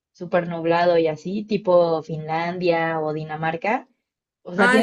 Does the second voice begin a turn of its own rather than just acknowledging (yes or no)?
yes